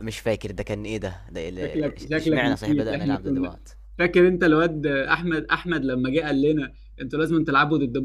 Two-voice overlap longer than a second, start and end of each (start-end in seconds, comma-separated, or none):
1.6-3.6